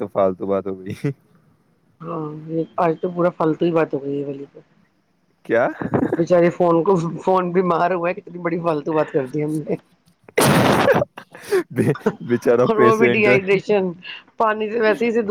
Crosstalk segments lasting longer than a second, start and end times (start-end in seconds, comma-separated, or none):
12.1-13.3